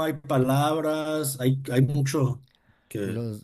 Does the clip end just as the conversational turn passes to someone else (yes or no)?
yes